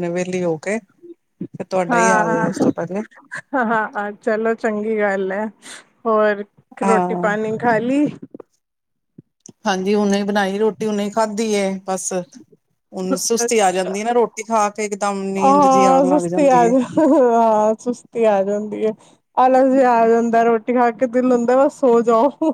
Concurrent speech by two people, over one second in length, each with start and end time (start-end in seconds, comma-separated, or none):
15.4-16.7